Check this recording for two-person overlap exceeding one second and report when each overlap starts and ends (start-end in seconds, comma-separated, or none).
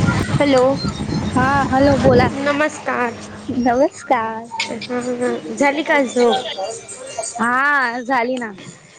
none